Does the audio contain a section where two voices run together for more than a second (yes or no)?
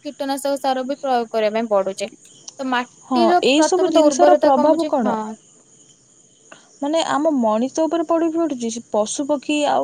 yes